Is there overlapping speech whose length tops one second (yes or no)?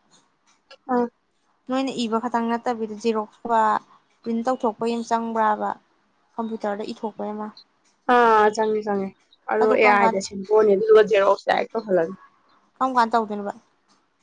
no